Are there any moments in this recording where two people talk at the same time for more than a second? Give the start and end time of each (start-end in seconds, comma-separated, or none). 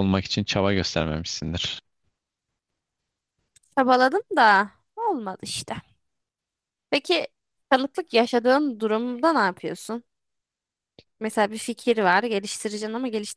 none